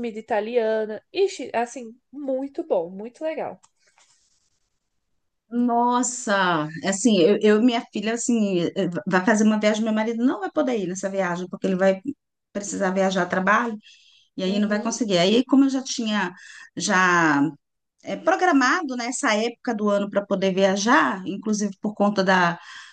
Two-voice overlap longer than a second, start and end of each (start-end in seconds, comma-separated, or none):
none